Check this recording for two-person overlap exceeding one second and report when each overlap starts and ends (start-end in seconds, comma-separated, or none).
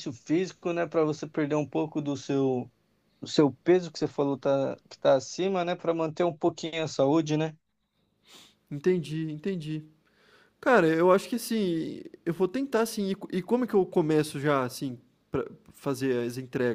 none